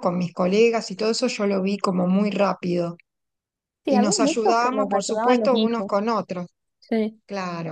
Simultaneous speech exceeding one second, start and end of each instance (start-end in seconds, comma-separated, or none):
3.9-5.9